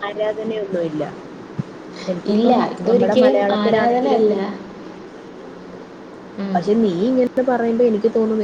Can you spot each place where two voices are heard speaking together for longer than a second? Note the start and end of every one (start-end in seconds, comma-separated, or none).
2.4-4.2